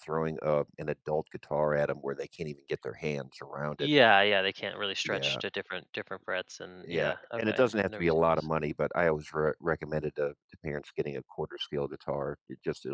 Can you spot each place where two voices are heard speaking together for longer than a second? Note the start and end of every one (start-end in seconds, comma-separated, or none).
6.9-8.5